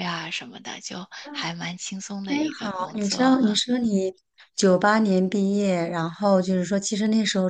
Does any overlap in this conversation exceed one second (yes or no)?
yes